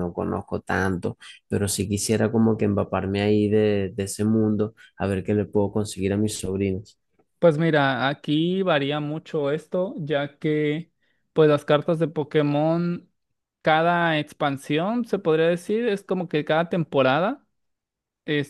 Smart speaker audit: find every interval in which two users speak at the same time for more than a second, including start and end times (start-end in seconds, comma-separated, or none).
none